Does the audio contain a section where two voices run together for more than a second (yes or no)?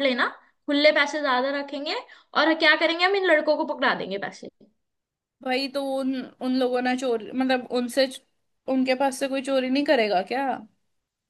no